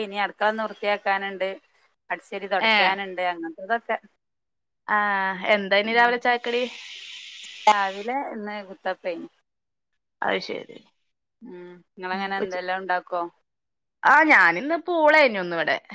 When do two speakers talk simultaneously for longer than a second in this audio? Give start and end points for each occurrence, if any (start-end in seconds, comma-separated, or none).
none